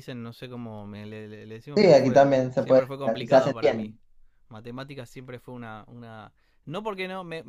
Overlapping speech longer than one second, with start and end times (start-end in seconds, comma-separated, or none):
1.7-3.5